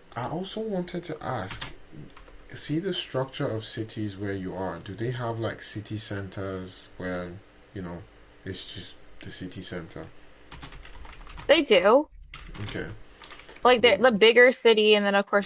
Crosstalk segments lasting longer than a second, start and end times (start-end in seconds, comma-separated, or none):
none